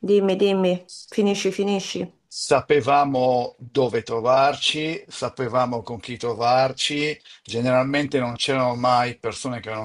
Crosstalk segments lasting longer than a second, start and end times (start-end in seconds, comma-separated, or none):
none